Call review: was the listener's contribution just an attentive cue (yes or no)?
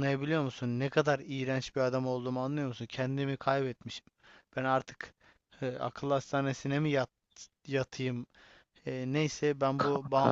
yes